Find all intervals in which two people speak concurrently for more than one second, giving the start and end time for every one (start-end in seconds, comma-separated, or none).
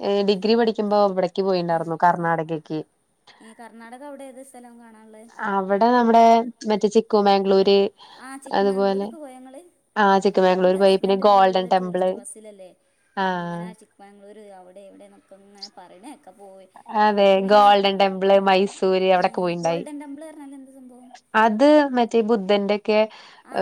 10.4-12.1